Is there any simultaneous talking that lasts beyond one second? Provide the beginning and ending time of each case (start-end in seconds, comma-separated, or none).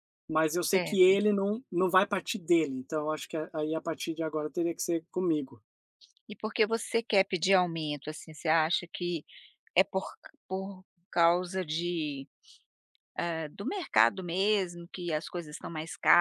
none